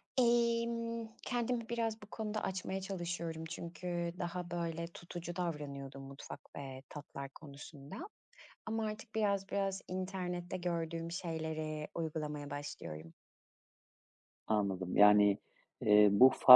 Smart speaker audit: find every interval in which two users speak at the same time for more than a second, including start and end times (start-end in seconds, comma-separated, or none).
none